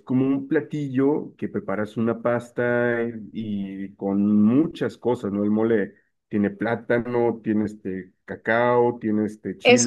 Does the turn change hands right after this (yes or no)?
yes